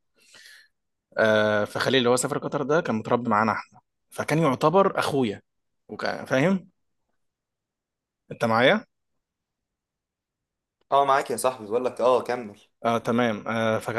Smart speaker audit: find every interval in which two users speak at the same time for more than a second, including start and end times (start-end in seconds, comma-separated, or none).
none